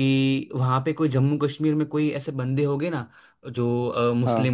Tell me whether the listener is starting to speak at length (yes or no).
no